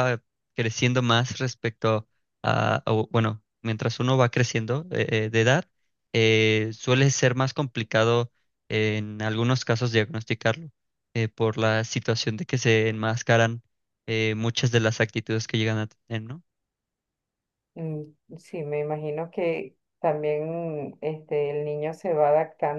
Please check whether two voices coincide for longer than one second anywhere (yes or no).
no